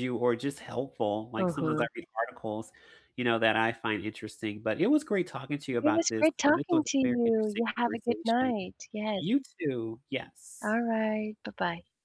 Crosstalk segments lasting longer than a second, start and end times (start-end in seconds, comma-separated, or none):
5.8-8.5